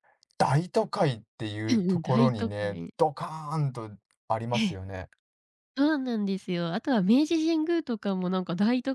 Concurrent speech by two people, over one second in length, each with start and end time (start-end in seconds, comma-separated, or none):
1.7-2.9